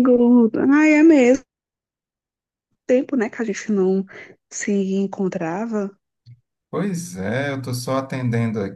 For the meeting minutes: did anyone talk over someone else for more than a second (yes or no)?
no